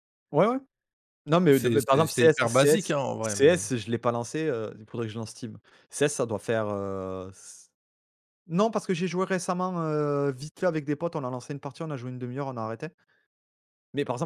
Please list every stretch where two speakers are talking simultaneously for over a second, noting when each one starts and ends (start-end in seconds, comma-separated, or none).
1.5-3.7